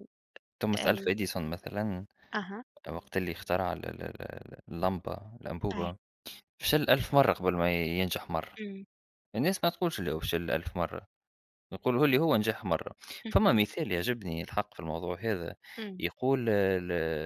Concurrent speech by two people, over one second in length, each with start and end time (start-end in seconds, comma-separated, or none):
none